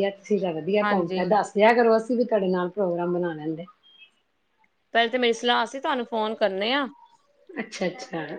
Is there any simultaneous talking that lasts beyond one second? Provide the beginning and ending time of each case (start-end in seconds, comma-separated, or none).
none